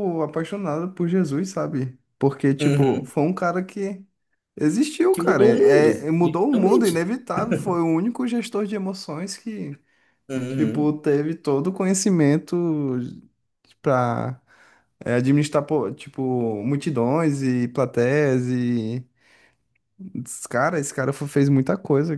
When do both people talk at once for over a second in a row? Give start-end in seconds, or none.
5.1-7.1